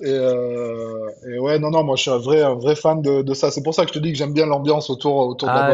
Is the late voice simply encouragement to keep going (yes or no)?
no